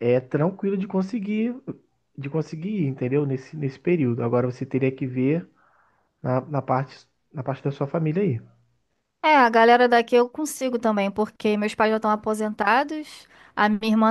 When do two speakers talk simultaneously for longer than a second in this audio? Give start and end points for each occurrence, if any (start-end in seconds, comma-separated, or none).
none